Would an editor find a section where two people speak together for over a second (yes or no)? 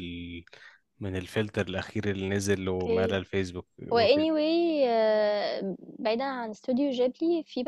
no